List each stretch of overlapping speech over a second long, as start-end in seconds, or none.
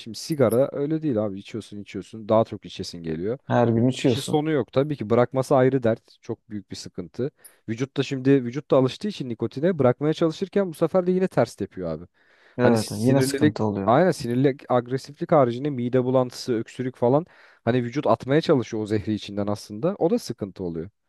12.6-13.9